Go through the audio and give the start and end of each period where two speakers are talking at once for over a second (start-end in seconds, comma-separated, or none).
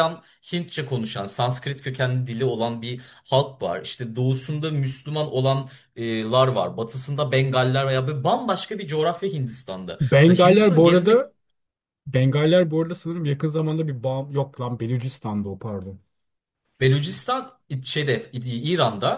10.0-11.3